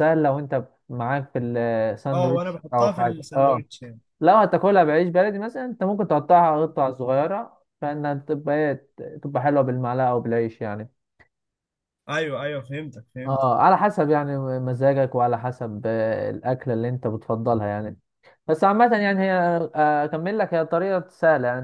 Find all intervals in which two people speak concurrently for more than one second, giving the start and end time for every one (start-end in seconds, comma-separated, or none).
2.1-3.6